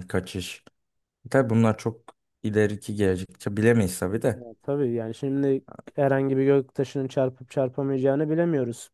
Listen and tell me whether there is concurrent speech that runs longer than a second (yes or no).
no